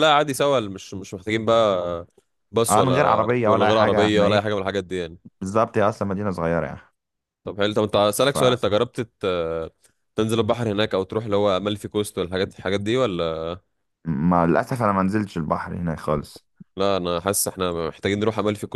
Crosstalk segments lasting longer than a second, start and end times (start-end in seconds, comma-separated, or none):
2.7-4.5